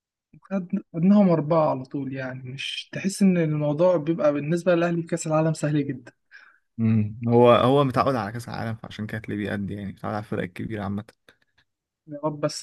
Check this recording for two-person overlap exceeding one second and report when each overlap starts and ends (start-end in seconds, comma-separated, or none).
none